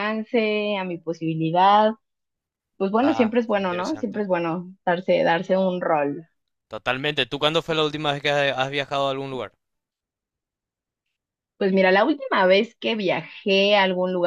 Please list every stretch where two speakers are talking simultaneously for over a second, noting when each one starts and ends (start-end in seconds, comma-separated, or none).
3.0-4.2